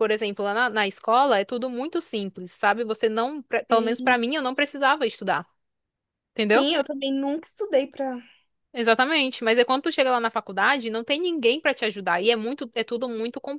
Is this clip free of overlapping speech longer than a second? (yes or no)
yes